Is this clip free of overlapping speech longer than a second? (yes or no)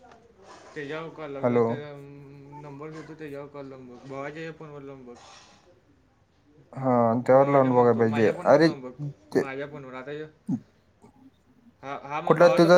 no